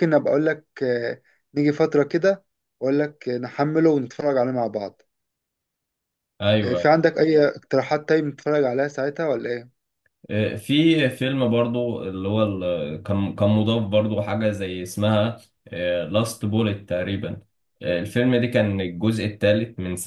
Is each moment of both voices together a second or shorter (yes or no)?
yes